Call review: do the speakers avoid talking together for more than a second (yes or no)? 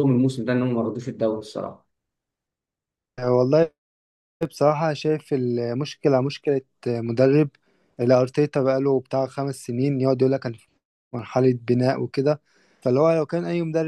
yes